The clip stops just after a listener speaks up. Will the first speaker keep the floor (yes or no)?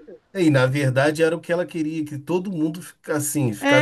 no